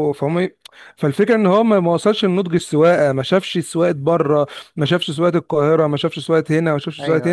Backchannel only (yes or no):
yes